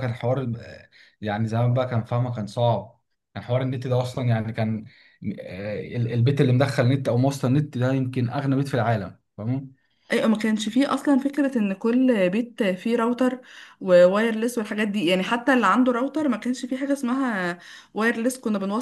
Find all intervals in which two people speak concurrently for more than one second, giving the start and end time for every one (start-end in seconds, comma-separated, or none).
none